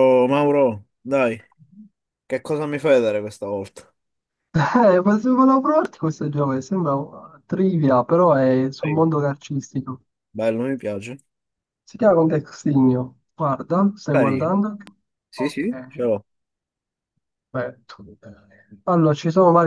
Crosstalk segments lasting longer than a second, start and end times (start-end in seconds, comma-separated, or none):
none